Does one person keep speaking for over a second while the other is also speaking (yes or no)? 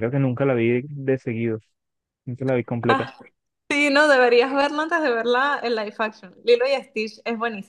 no